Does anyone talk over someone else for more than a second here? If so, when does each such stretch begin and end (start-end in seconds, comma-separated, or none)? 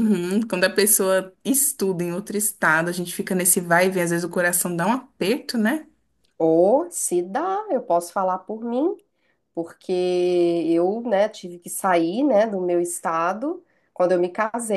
none